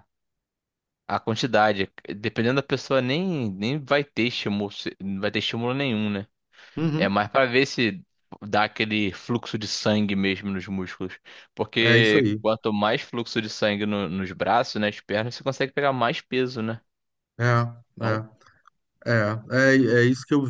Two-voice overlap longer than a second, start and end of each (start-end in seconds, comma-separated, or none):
none